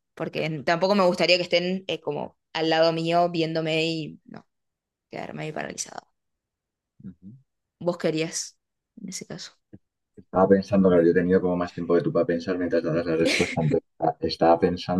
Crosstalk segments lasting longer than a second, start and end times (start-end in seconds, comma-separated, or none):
none